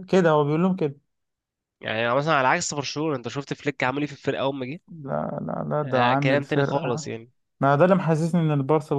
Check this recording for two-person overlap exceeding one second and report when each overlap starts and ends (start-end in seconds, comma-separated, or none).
5.8-7.1